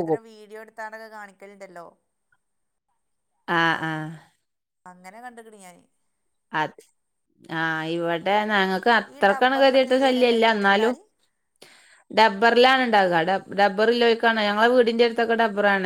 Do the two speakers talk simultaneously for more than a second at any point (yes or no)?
yes